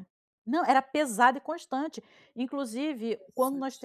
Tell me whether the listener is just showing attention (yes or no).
yes